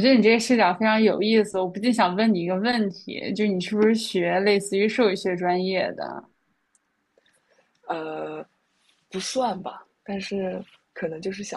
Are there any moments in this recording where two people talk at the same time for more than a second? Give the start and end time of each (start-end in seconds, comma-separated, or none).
none